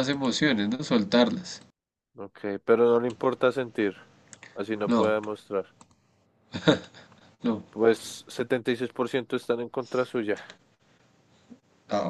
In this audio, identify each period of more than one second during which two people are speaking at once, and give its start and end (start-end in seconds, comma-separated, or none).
none